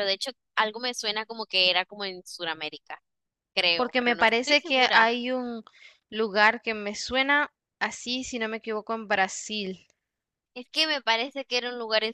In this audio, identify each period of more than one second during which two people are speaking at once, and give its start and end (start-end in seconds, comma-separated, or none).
3.8-5.1